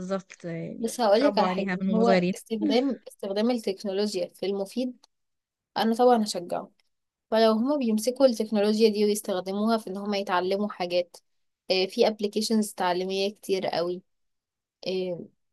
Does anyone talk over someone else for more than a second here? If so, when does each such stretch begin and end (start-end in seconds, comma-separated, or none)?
0.8-2.3